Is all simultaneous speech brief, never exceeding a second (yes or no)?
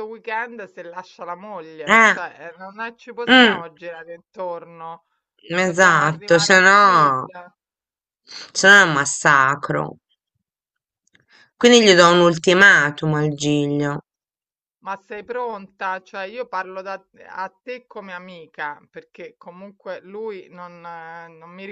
no